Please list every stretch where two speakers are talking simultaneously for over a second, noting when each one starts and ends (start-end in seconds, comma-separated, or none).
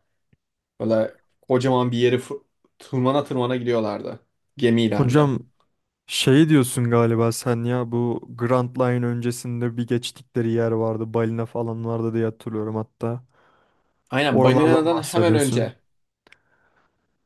14.3-15.7